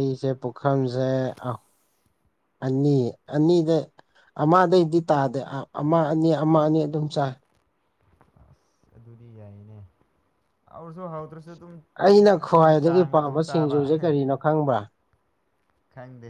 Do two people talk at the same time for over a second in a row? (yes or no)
yes